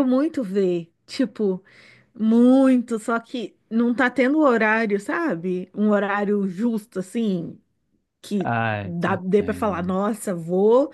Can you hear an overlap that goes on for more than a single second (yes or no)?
yes